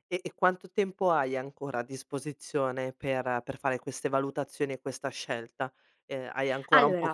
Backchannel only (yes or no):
yes